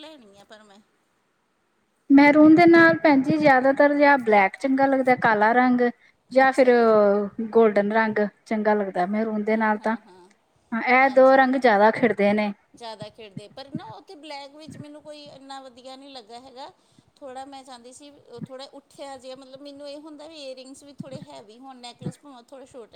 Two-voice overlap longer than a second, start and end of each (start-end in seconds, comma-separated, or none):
none